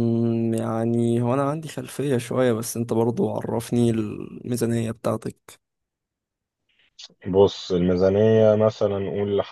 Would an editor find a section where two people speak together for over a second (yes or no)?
no